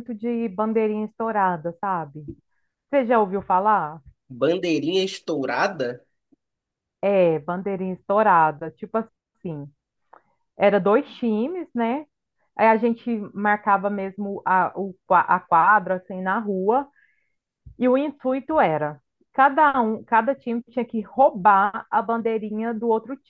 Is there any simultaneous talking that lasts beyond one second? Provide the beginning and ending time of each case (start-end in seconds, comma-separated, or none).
none